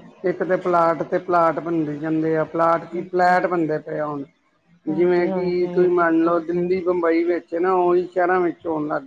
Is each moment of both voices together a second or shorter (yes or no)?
no